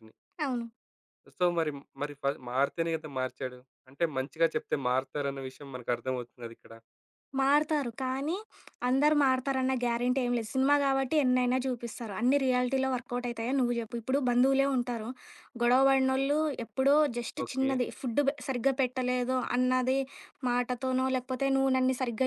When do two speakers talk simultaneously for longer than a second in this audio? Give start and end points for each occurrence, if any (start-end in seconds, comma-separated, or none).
none